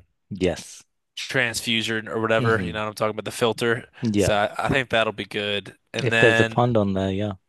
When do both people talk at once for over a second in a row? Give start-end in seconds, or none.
none